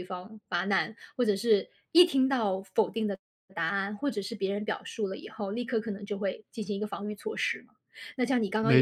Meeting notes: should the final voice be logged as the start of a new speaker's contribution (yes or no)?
yes